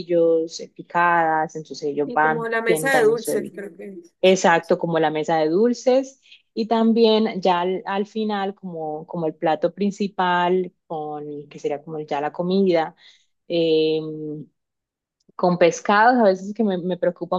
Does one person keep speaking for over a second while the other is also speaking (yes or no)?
yes